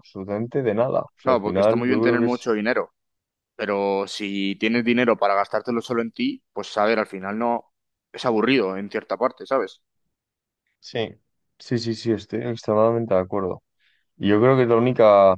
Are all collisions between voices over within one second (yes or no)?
no